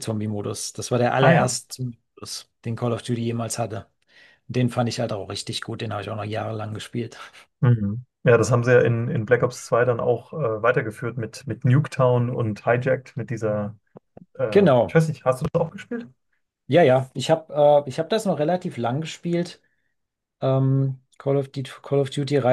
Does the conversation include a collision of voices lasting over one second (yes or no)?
no